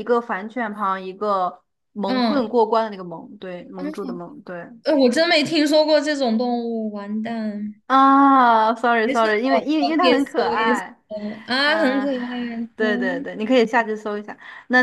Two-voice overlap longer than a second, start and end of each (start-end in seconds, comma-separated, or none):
9.0-10.8